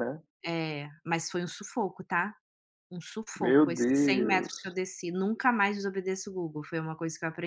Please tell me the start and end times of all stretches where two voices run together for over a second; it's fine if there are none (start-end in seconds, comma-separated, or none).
3.4-4.8